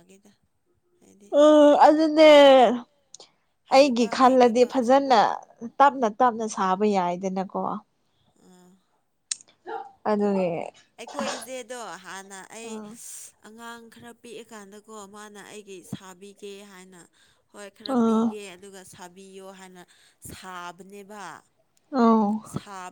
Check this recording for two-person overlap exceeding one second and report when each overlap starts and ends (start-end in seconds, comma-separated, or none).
3.7-5.2